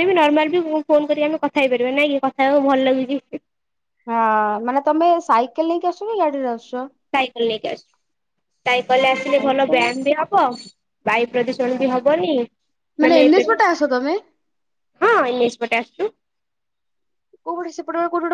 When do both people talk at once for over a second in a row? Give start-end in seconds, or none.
none